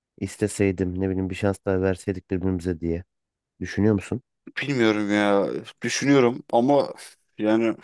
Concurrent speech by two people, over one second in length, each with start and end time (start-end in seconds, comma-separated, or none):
none